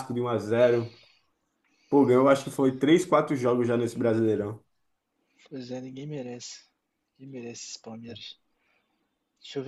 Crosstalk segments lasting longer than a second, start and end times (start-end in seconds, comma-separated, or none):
none